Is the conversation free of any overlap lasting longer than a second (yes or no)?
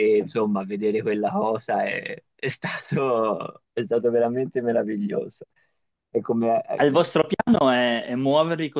yes